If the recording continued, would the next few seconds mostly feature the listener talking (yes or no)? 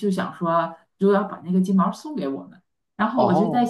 no